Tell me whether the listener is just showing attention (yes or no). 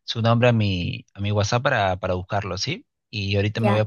yes